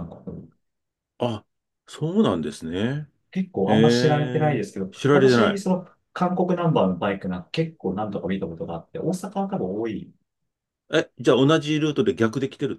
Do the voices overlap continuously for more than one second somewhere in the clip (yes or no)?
yes